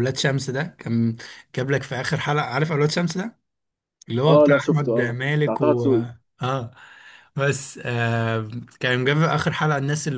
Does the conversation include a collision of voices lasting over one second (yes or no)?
yes